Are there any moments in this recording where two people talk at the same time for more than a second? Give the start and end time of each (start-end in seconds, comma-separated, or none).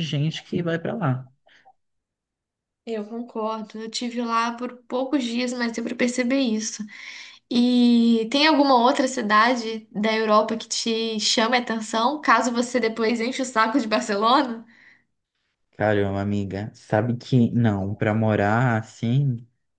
none